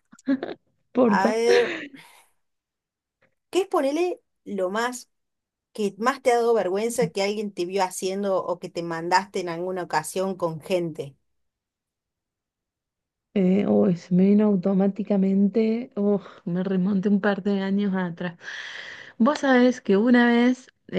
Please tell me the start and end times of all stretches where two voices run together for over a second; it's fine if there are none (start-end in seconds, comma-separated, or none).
none